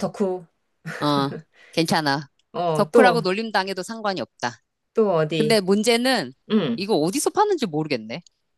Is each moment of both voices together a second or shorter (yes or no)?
yes